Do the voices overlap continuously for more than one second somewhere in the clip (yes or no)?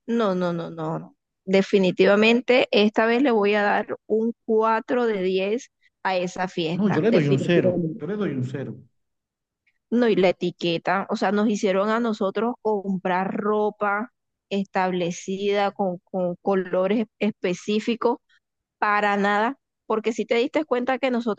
yes